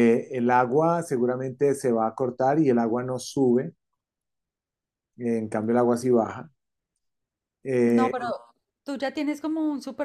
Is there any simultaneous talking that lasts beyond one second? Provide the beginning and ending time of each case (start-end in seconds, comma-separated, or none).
none